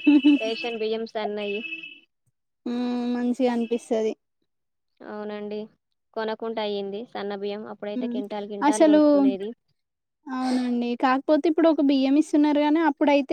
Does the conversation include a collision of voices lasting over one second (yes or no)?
no